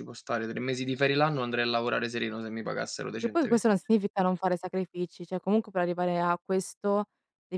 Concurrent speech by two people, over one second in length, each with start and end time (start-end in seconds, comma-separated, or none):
none